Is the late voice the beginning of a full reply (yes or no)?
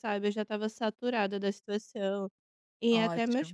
no